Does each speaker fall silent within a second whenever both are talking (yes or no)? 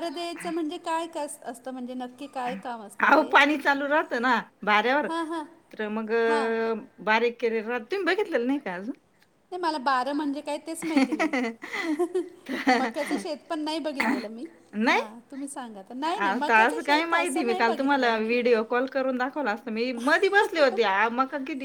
no